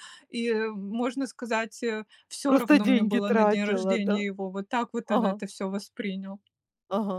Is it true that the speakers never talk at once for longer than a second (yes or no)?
no